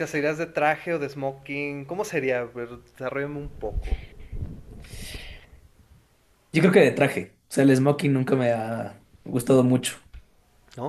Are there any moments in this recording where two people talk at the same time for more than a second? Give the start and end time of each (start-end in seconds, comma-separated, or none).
none